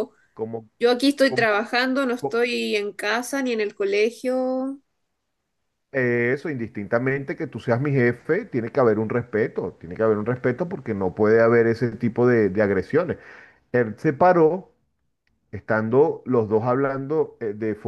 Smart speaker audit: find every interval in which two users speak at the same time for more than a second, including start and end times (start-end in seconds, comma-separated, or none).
none